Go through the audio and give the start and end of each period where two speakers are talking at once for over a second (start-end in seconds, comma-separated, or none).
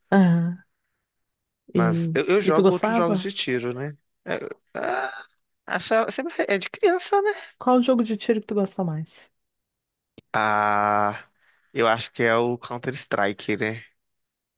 1.8-3.3